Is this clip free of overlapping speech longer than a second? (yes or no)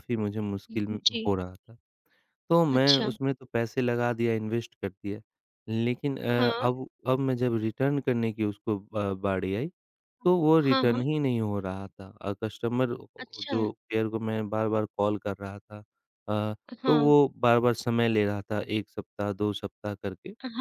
yes